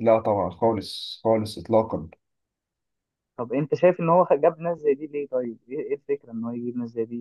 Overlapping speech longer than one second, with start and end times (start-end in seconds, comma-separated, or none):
none